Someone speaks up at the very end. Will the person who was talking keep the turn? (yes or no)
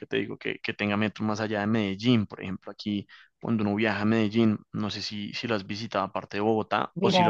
no